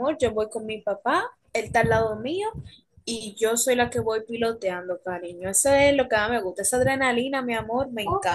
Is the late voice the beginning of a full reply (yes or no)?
yes